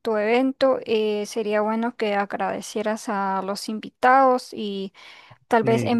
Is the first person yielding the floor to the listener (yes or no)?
no